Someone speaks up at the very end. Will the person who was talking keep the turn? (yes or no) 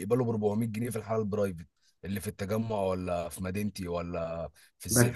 no